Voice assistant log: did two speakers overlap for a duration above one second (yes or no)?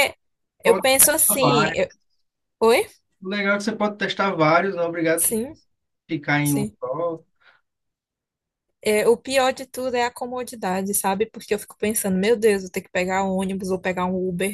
yes